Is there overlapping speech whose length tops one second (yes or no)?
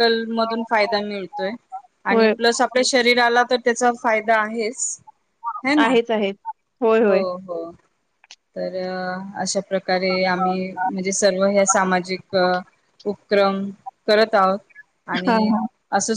no